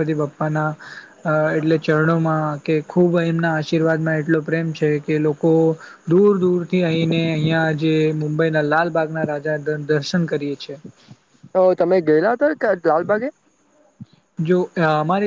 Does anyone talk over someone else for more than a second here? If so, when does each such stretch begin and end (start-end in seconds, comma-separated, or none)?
none